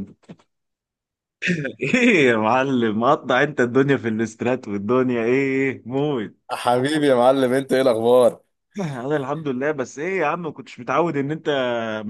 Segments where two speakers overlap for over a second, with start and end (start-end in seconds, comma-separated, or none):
none